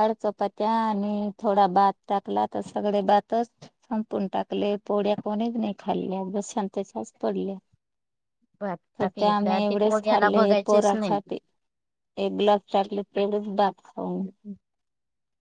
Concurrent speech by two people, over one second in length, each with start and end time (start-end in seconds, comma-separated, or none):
9.0-11.2